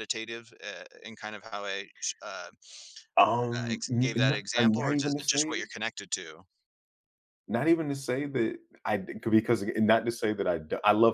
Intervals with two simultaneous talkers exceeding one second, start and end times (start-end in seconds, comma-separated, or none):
3.6-5.7